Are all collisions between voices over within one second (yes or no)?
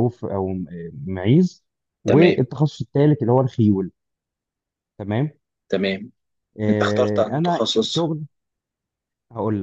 no